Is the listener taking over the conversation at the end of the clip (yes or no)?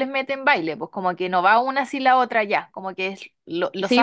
yes